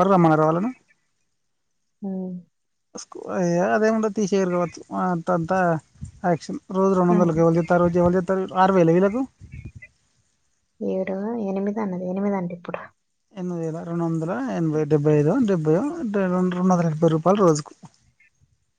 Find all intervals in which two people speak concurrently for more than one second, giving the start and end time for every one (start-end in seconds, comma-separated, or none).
none